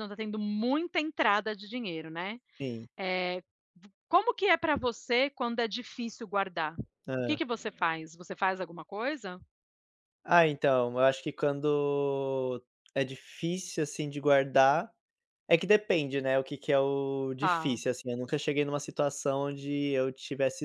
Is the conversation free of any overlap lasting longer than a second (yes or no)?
yes